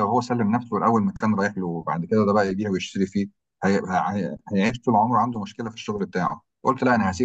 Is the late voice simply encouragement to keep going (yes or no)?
yes